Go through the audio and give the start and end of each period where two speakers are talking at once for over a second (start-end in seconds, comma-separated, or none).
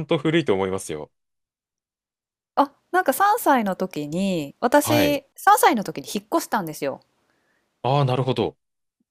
none